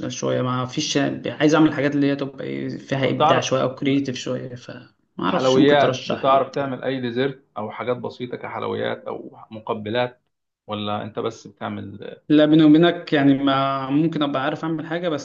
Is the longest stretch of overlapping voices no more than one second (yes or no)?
no